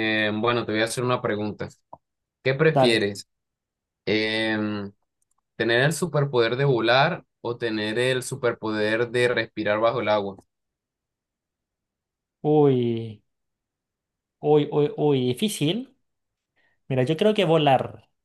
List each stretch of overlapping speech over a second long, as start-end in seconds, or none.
none